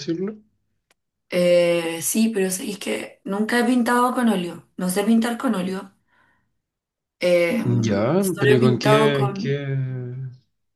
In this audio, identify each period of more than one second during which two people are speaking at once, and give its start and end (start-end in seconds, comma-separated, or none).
8.2-9.7